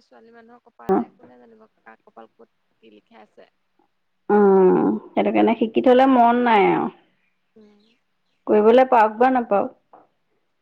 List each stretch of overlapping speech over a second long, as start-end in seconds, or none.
none